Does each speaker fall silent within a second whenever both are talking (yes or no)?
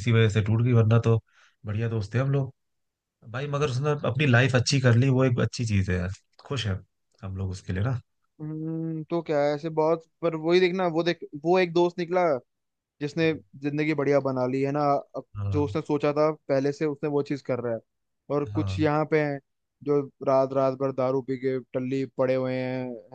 yes